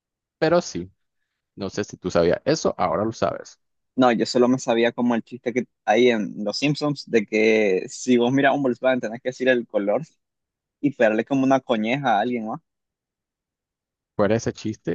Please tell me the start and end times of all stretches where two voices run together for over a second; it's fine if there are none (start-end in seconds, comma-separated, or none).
none